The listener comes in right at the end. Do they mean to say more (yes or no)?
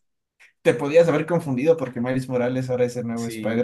yes